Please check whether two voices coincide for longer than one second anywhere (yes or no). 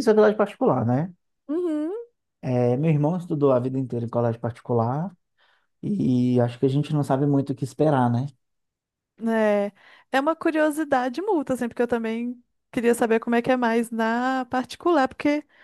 no